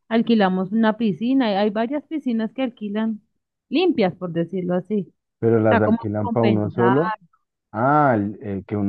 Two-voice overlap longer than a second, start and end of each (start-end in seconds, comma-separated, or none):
5.6-6.9